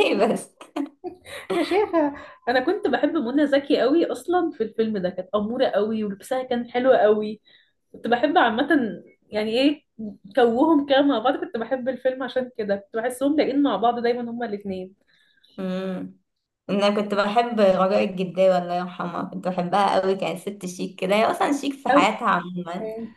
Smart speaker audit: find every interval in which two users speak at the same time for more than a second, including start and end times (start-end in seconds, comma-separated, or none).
none